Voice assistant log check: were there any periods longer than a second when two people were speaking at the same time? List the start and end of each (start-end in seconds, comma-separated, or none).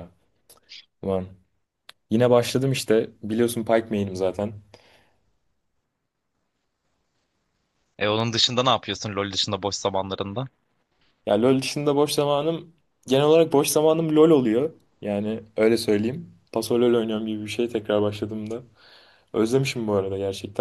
none